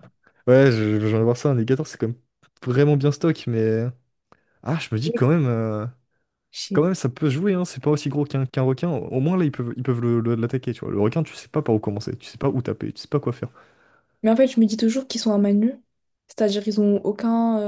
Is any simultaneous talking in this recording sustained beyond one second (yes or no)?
no